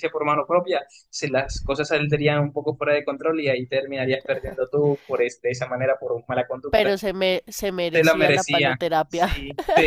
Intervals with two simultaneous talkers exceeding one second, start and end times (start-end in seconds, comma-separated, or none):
7.9-9.3